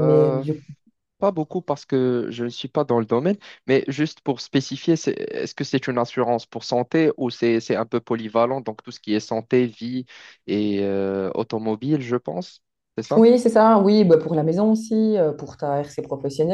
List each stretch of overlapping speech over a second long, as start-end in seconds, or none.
none